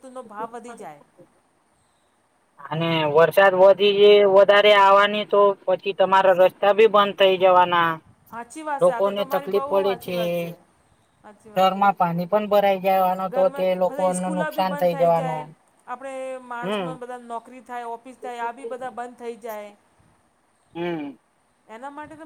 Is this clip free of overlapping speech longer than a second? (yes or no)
no